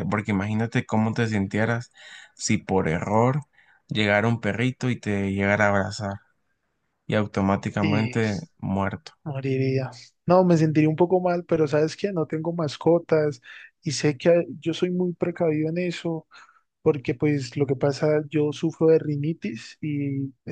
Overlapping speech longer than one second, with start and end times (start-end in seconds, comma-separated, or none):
none